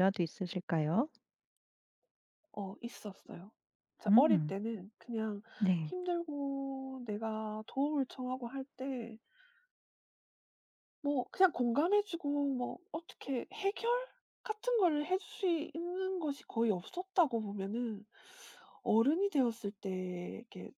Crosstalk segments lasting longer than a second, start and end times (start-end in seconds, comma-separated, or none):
none